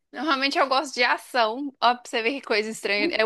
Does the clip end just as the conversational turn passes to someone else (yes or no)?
no